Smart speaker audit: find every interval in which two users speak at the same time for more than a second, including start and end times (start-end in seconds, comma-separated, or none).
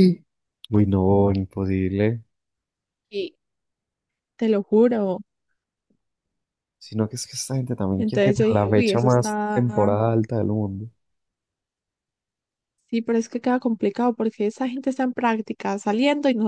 8.0-9.6